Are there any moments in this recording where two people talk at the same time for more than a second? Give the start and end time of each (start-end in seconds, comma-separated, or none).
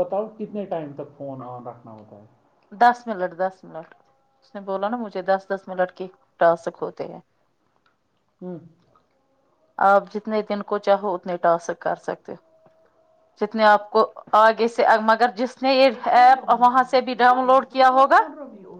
15.9-18.2